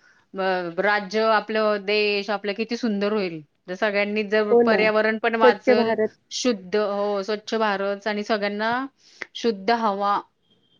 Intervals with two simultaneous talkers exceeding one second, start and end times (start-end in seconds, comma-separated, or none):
4.5-6.0